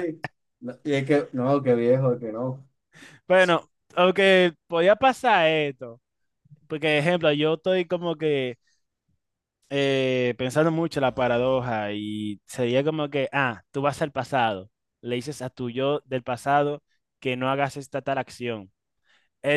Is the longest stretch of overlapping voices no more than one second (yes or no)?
yes